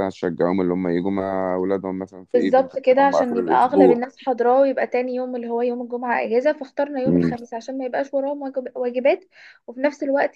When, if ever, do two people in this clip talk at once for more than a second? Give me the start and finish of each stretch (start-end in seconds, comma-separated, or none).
2.3-4.0